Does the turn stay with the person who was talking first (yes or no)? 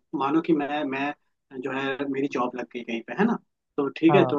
yes